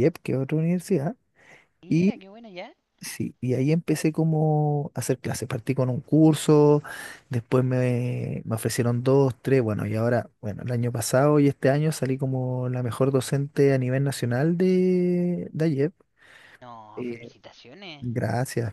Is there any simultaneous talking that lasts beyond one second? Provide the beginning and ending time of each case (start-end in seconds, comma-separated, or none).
none